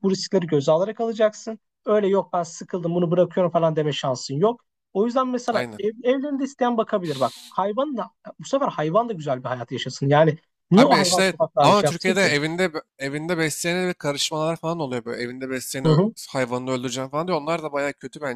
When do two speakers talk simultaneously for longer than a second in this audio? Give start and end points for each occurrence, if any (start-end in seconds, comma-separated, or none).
10.7-12.3